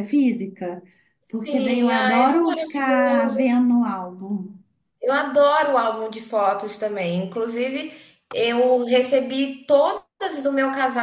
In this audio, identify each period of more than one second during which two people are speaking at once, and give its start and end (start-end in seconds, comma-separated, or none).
1.3-3.4